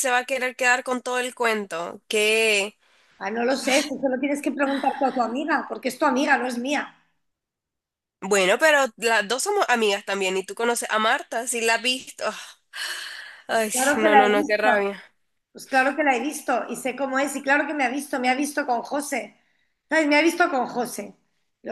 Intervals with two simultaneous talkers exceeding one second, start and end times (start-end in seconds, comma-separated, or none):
13.5-14.9